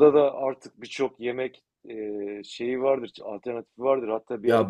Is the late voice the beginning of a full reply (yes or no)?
no